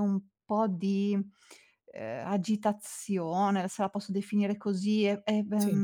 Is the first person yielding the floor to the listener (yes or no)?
no